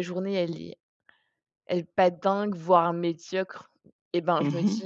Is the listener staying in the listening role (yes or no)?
yes